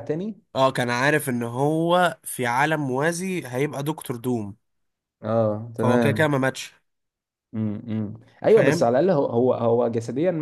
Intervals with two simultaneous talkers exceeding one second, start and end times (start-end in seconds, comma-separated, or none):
none